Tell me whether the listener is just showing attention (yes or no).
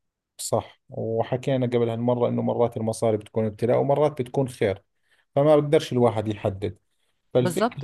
yes